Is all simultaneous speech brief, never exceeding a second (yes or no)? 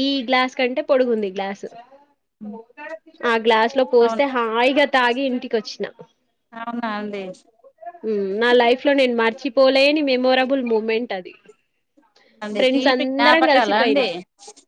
no